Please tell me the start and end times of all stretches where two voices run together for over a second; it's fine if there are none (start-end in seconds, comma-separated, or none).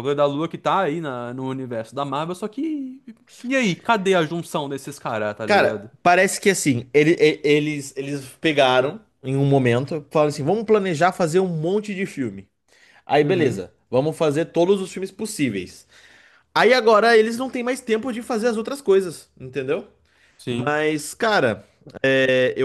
none